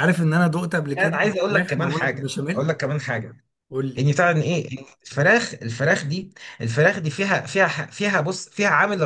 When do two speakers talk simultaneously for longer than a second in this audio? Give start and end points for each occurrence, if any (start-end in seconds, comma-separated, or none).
0.9-2.7